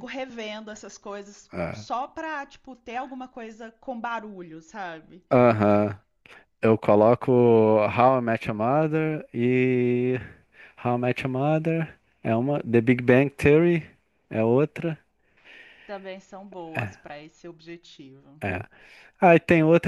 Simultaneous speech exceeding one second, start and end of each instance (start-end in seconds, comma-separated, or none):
none